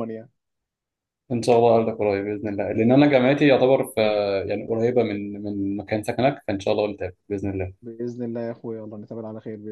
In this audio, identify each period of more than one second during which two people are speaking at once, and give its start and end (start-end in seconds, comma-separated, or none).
none